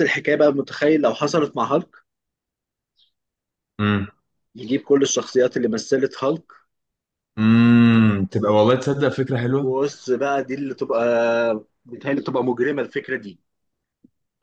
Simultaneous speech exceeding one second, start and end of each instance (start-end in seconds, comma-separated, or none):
none